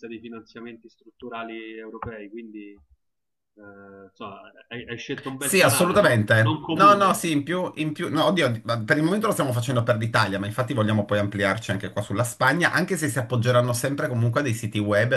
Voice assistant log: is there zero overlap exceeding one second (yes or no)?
no